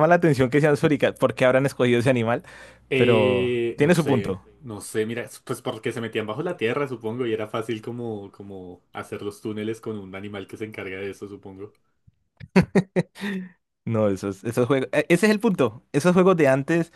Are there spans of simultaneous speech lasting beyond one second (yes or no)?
yes